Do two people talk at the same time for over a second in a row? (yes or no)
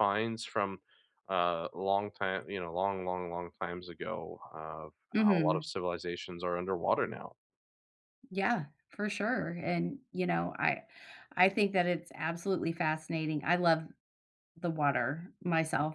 no